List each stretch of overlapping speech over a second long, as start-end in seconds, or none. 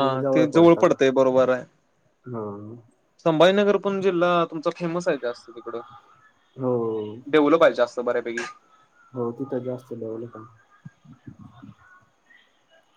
none